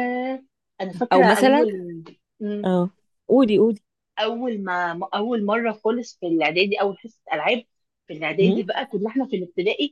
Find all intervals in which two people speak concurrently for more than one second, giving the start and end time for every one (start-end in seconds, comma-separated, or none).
none